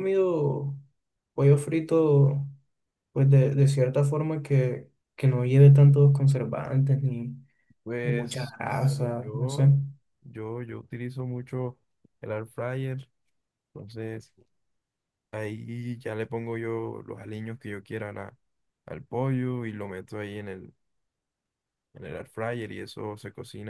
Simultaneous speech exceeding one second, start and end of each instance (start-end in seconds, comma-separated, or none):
8.0-9.7